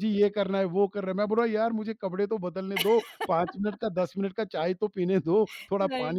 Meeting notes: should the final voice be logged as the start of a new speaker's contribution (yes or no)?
no